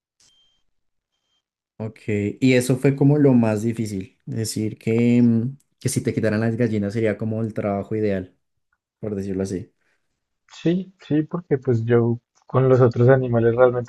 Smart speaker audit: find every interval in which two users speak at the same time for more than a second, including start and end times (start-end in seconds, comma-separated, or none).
none